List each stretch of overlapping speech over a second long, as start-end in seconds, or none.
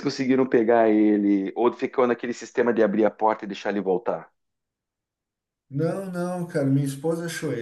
none